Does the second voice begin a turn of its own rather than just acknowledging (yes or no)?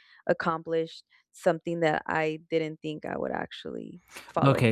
yes